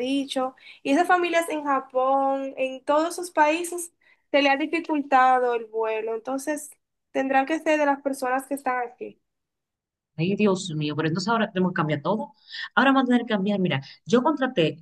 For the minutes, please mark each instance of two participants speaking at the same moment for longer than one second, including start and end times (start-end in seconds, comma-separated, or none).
none